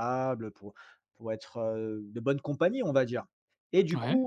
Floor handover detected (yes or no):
no